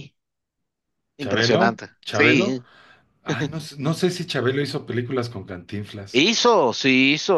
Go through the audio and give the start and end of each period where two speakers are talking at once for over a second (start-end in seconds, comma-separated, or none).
1.2-2.6